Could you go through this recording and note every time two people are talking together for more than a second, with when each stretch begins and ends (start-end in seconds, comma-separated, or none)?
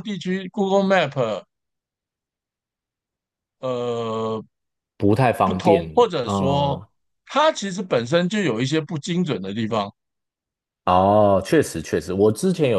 5.4-6.8